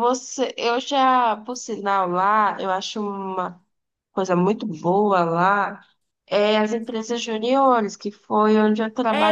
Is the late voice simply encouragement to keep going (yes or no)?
no